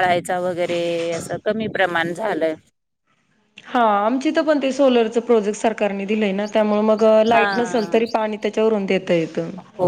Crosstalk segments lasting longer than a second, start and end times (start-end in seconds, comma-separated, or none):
none